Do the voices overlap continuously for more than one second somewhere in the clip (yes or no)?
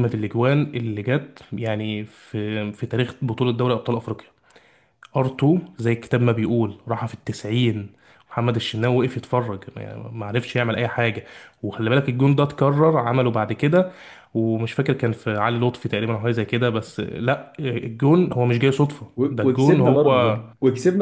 yes